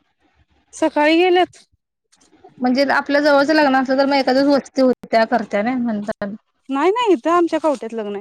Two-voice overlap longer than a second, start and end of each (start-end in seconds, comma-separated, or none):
none